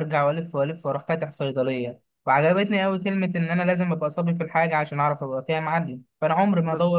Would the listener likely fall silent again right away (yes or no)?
yes